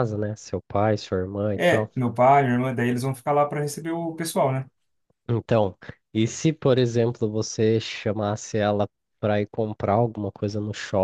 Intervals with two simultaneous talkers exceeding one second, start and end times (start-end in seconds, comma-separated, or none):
none